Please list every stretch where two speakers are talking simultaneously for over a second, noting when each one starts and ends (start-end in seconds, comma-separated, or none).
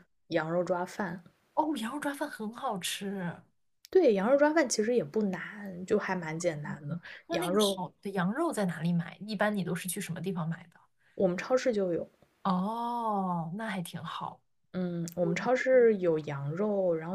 6.3-7.8